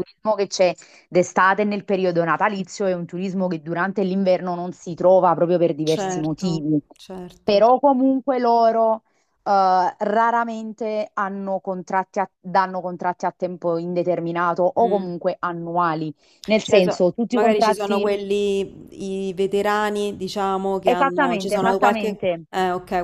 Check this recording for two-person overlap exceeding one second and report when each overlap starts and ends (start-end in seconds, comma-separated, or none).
16.6-18.1, 20.8-22.4